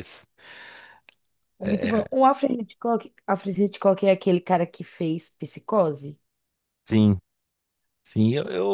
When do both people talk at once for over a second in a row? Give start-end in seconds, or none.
none